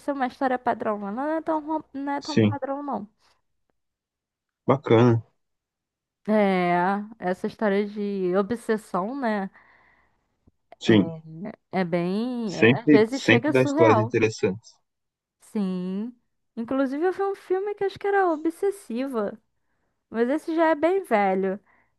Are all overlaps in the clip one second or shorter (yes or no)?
no